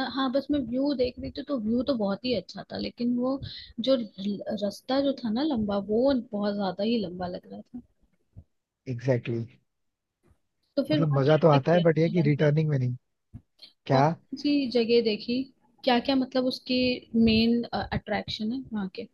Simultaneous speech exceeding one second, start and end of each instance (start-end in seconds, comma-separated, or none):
10.9-12.5